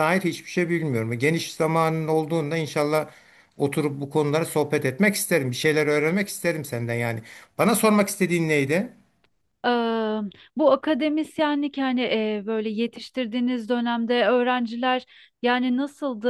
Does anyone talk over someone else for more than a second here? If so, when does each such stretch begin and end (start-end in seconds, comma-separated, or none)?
none